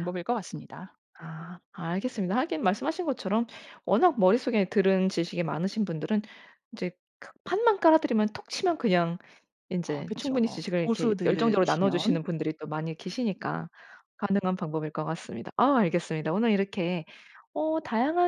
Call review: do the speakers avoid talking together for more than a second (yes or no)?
no